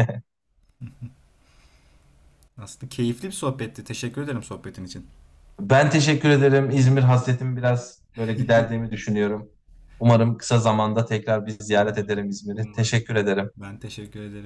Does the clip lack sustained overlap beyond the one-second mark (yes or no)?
no